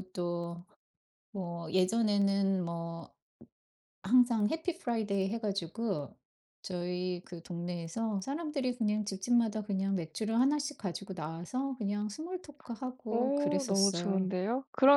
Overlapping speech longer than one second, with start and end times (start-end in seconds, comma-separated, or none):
13.1-14.3